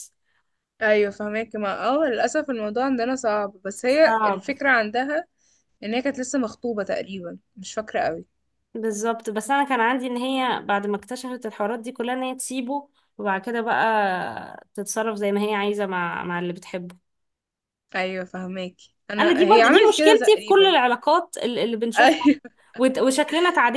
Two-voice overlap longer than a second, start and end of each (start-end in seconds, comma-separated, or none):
19.2-20.7